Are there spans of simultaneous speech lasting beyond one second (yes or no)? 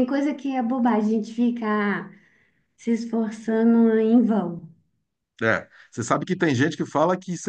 no